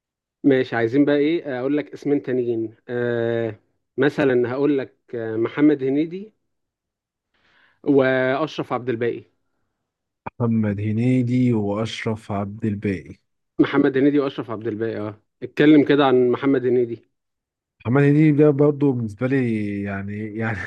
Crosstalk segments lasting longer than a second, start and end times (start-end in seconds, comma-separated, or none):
none